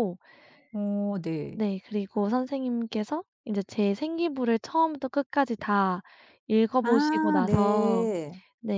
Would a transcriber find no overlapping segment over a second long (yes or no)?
no